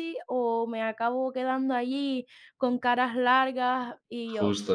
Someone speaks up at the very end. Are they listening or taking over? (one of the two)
listening